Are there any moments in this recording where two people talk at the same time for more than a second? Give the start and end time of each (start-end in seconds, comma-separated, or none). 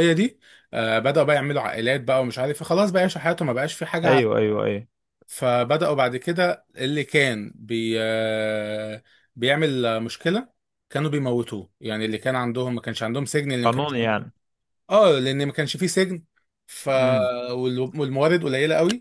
none